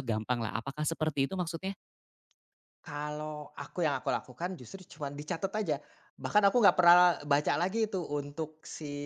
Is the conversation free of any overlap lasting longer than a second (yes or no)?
yes